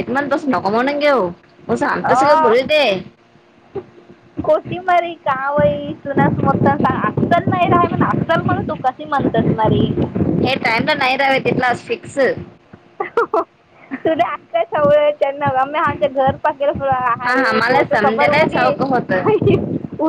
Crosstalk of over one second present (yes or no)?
yes